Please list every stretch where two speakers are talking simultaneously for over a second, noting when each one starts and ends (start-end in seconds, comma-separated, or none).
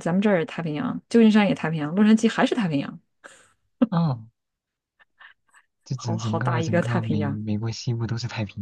5.9-7.4